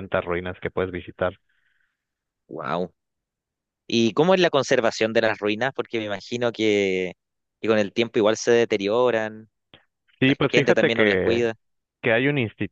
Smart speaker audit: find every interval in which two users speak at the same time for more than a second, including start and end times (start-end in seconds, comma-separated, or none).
10.2-11.5